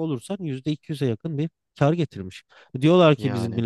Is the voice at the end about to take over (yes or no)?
no